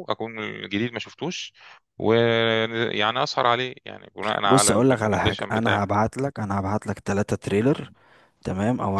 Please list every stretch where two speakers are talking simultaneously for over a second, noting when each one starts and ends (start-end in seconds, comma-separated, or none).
4.5-6.0